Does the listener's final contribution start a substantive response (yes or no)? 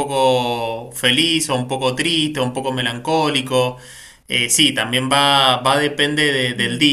no